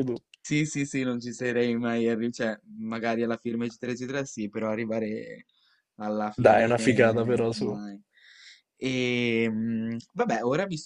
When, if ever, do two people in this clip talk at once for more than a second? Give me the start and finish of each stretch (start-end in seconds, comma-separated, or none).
6.4-7.8